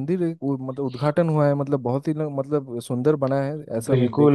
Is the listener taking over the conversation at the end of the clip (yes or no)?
yes